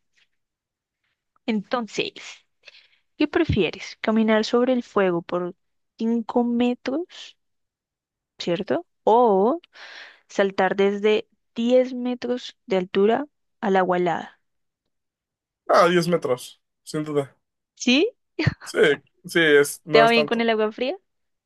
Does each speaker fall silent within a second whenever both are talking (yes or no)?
yes